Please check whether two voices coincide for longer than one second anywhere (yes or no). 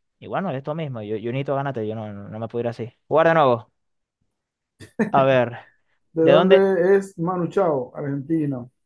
no